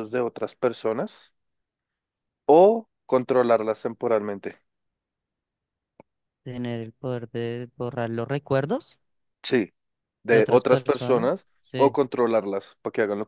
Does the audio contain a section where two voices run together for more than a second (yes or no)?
yes